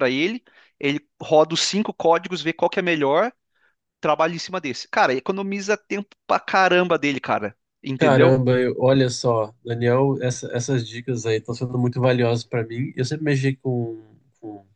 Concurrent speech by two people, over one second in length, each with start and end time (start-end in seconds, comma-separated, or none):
none